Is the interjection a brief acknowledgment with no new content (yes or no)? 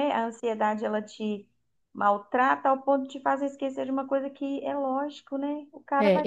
no